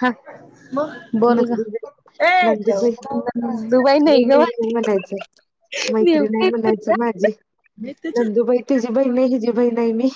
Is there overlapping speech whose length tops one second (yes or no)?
yes